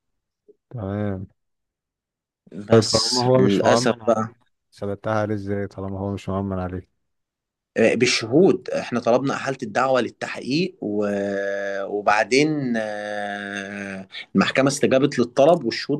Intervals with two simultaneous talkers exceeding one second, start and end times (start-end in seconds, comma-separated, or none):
2.7-4.3